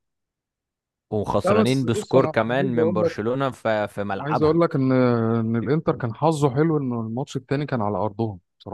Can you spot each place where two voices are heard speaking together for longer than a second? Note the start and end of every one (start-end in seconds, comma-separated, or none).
1.4-3.1